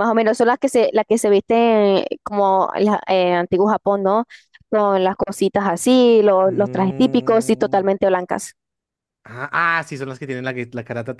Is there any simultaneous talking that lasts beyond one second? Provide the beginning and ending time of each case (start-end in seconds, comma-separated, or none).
6.5-7.8